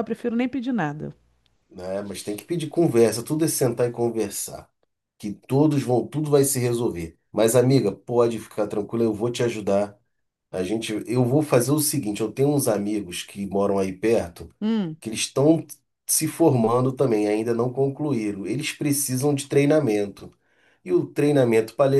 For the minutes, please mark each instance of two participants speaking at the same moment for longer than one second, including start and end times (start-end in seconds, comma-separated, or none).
none